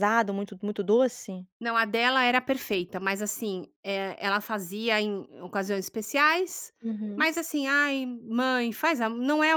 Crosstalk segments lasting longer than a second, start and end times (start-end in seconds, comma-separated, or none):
none